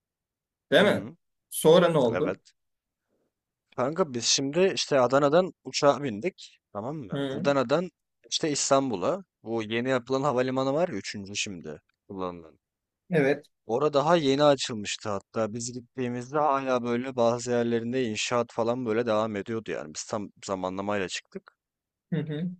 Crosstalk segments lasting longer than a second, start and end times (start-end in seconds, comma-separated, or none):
none